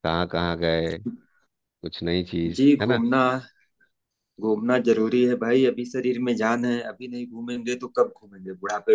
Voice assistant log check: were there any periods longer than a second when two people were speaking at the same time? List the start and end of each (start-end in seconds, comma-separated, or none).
none